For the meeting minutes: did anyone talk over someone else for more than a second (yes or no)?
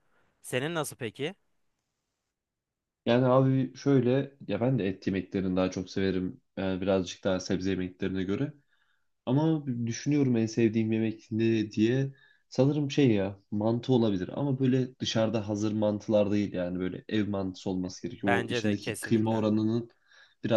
yes